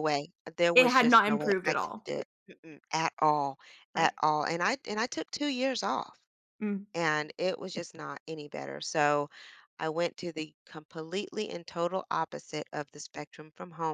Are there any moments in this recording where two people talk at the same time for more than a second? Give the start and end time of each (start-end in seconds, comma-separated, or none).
0.7-2.1